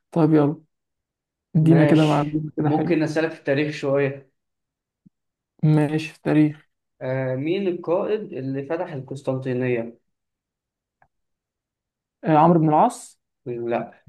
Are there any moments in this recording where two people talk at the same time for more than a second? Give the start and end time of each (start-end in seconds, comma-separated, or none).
1.6-3.0